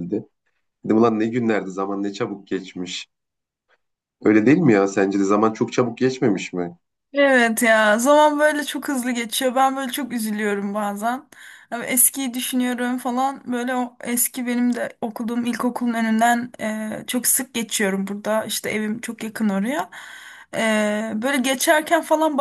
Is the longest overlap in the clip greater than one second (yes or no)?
no